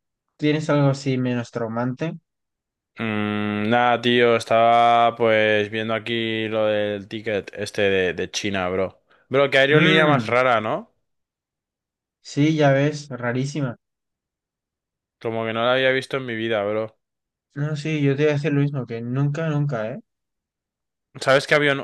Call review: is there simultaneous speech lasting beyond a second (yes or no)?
no